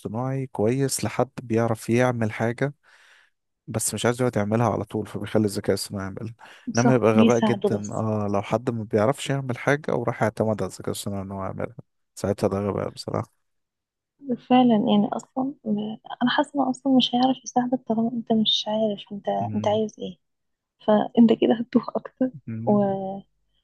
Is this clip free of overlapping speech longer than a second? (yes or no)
no